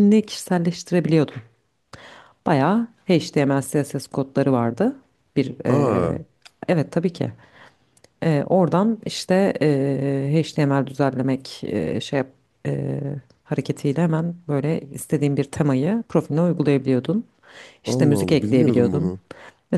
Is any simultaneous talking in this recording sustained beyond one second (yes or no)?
yes